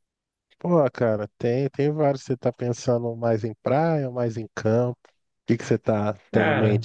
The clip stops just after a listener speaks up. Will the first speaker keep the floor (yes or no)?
no